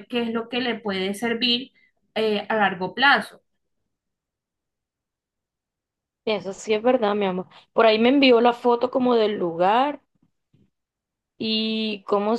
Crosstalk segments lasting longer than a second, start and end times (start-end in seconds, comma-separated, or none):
none